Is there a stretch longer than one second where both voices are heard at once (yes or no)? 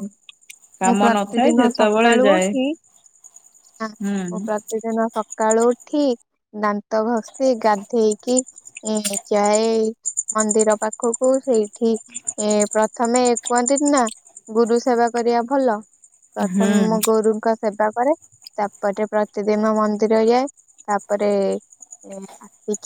yes